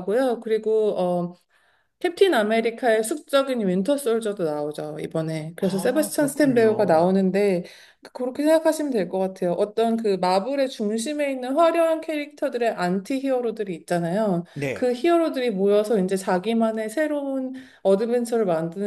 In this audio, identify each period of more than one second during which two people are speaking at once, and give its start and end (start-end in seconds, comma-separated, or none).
5.6-7.1